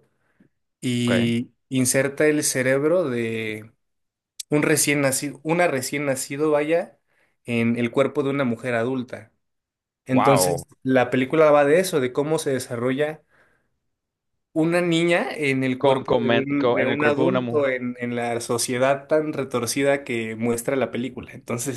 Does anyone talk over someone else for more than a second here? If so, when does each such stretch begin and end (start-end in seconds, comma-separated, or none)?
15.8-17.7